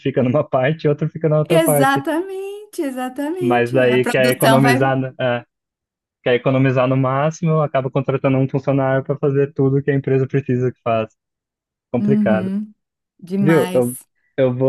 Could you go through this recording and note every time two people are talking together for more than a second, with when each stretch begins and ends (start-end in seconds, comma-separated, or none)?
3.4-5.0